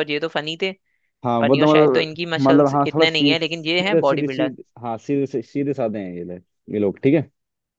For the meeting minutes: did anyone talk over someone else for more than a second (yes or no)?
yes